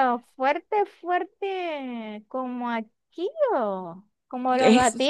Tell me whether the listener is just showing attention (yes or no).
no